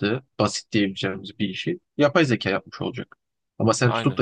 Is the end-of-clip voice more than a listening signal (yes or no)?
no